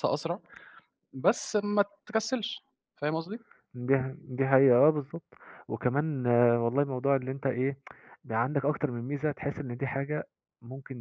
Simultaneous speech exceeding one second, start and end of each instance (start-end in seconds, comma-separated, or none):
none